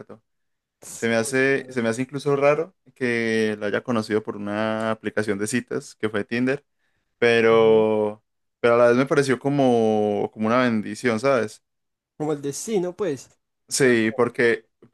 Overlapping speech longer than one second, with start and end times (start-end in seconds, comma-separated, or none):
none